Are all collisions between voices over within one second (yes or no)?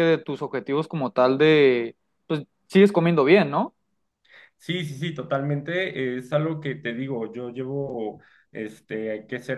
yes